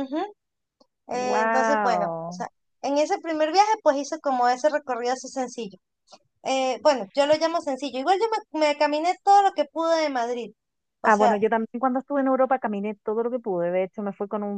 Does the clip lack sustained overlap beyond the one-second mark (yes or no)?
no